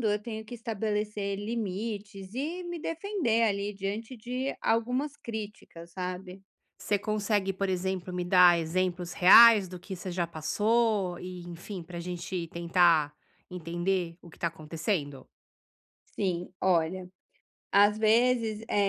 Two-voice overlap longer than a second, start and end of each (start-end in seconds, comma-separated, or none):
none